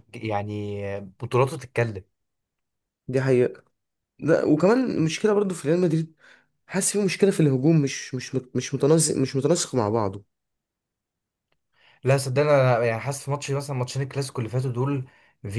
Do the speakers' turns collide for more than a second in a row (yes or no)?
no